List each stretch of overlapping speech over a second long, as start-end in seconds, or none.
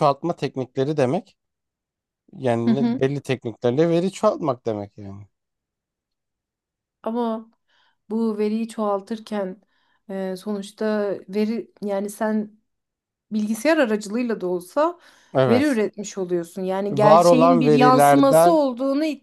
16.9-18.6